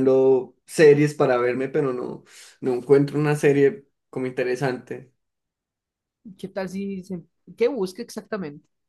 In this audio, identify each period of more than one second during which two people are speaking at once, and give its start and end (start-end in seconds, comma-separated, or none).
none